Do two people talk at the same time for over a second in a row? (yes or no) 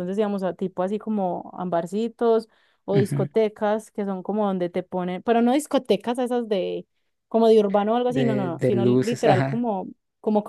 yes